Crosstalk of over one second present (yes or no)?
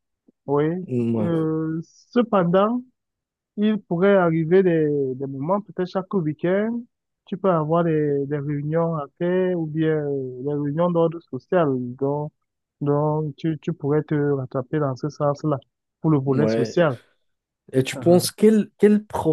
no